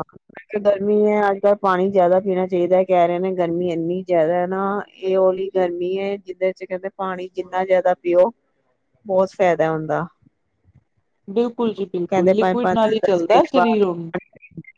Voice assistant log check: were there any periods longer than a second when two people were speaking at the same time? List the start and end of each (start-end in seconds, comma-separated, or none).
12.1-14.1